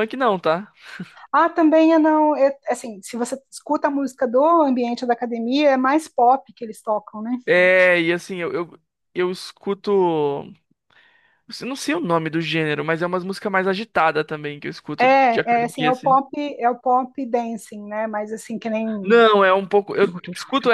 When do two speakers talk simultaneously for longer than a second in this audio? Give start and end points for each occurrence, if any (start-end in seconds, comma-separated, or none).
15.0-16.2